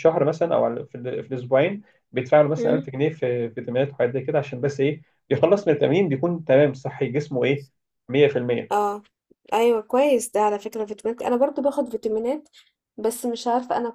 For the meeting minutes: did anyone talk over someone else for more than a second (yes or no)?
no